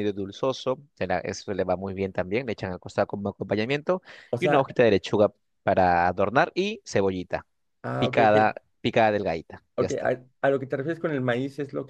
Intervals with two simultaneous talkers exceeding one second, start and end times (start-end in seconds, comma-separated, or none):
none